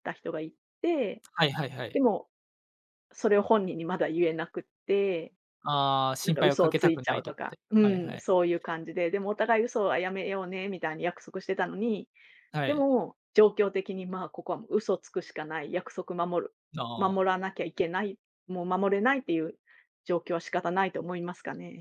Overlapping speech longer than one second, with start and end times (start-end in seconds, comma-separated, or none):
6.2-8.2